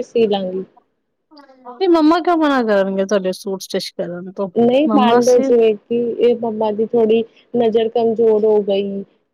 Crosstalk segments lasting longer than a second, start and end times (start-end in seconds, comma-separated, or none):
none